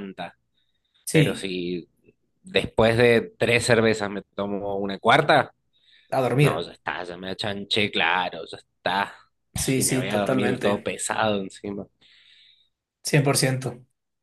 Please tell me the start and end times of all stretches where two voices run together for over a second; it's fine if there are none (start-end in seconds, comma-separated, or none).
9.7-10.9